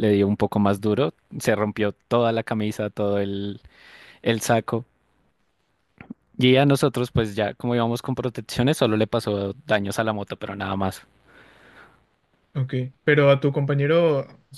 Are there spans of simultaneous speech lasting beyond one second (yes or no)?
no